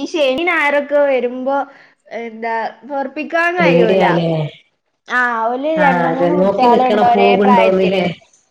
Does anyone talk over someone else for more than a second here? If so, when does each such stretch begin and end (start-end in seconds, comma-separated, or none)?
5.8-8.0